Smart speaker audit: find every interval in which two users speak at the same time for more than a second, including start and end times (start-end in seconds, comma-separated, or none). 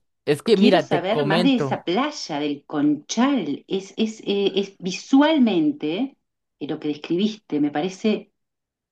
0.5-1.8